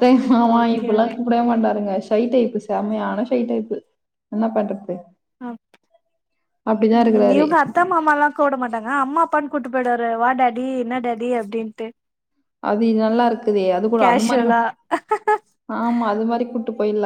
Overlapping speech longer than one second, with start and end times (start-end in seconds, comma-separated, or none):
none